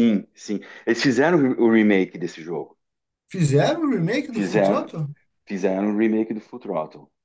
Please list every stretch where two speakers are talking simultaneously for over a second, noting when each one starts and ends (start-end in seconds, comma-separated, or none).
none